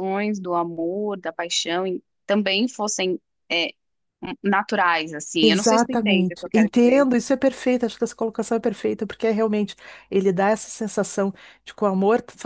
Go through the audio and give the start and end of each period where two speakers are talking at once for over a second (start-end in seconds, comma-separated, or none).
5.4-7.1